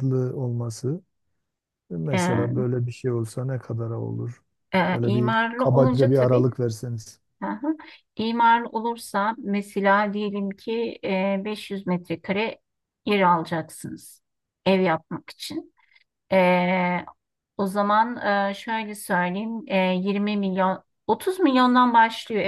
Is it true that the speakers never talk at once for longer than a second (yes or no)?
no